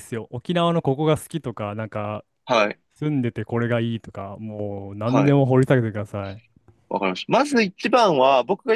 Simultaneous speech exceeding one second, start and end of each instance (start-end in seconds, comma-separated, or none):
none